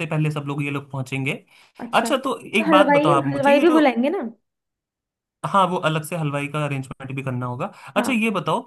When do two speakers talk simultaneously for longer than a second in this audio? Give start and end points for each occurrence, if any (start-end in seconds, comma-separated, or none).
1.9-3.8